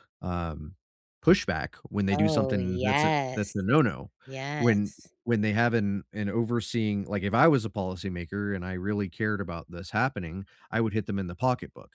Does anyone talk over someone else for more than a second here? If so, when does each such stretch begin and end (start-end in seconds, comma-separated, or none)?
2.1-3.6